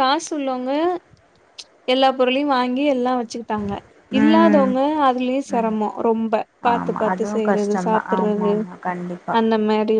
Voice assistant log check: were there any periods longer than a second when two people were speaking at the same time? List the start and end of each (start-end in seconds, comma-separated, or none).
6.7-8.5